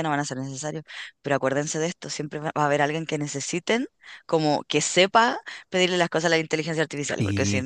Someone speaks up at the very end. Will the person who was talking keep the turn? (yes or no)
yes